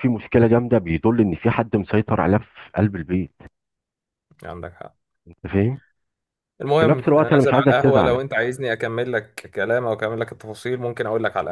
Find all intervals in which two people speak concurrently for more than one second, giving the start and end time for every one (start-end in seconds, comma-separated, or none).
6.8-8.2